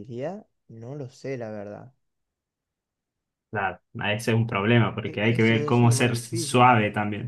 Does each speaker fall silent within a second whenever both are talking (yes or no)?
no